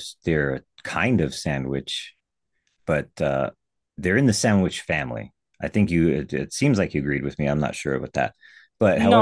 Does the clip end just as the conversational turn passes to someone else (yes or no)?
yes